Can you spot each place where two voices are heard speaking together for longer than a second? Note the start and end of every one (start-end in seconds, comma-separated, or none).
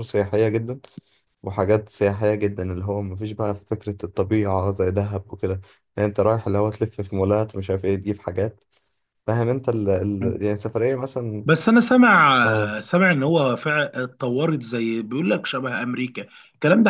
none